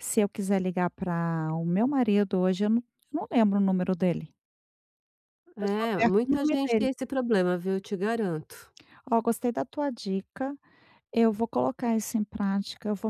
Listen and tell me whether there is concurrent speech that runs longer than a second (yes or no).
yes